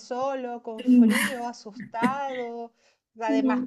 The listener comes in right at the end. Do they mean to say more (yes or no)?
no